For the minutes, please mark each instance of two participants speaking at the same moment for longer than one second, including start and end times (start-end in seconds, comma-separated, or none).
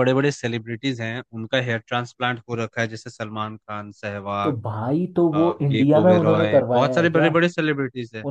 5.3-7.3